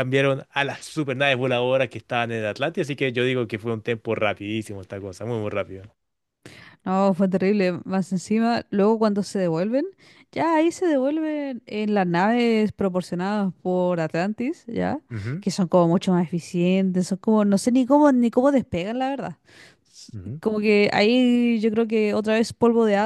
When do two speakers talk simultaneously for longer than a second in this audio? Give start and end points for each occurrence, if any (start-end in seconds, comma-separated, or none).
none